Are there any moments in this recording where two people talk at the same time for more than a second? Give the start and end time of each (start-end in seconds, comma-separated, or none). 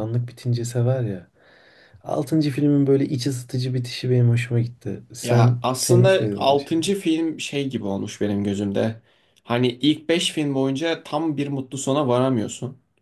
5.2-6.9